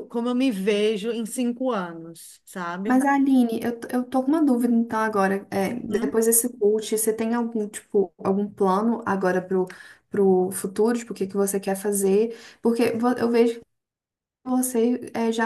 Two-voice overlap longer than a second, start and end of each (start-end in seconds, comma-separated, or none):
none